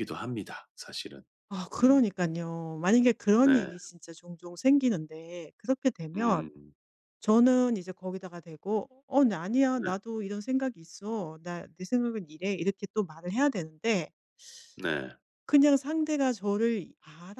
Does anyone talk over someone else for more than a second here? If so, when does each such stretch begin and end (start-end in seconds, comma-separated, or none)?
none